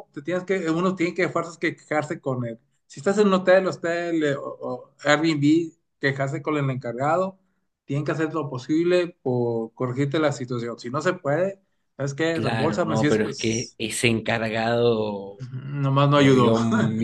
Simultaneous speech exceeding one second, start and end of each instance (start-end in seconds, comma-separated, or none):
12.3-13.8